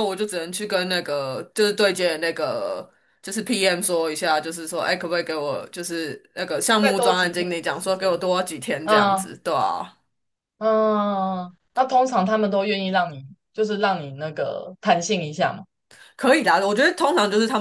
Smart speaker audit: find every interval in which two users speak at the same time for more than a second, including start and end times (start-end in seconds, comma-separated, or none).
6.8-8.2